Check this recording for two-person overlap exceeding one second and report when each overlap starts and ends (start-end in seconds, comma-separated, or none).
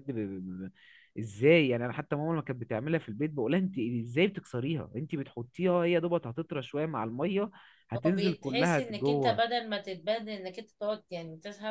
8.1-9.4